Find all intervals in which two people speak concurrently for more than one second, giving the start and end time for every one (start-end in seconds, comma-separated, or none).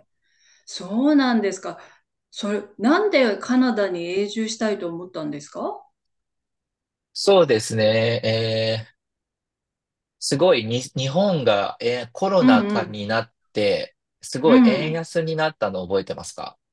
none